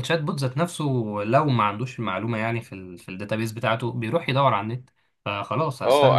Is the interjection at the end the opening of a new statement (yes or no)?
yes